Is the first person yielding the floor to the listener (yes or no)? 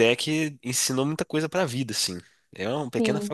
yes